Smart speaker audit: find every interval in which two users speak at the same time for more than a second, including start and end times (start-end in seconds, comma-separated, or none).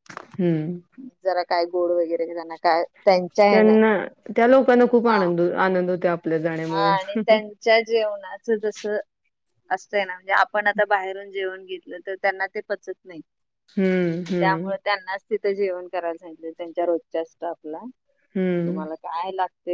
none